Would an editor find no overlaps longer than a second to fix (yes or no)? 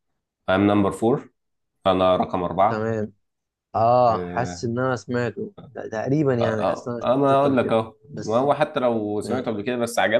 no